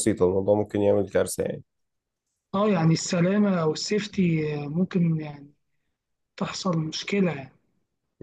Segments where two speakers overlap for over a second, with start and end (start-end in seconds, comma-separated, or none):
none